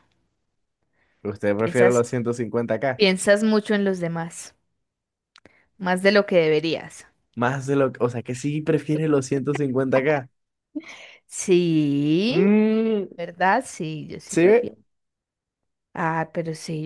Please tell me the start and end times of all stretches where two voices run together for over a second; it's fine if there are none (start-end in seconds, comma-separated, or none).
none